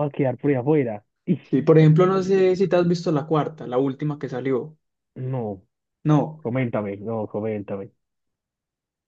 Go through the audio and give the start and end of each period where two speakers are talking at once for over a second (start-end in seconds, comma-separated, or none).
none